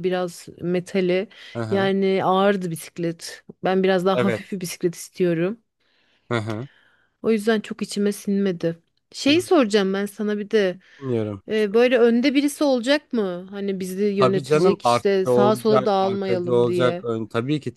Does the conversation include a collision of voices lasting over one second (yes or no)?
yes